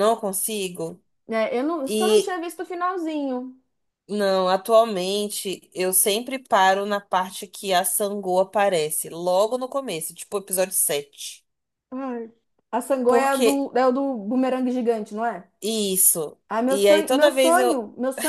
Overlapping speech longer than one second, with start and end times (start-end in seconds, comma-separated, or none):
16.5-17.8